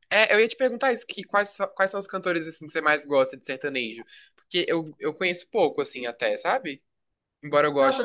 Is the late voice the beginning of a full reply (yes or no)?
yes